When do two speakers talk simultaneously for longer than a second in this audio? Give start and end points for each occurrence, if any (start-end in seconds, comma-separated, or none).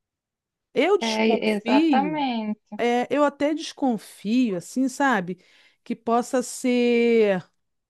1.0-2.2